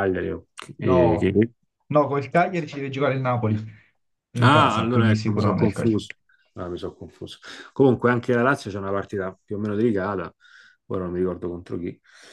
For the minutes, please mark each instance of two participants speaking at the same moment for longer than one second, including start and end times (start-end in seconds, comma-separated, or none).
4.4-6.0